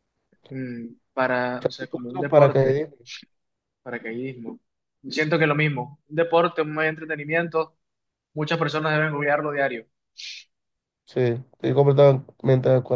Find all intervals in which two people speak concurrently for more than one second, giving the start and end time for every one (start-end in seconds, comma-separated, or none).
1.5-2.8